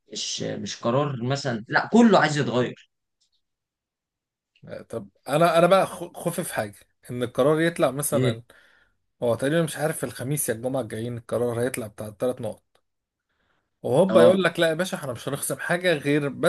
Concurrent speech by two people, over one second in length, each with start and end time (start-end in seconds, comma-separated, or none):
none